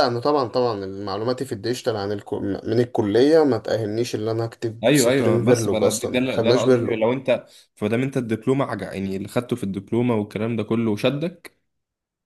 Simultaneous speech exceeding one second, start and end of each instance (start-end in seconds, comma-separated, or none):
4.8-7.0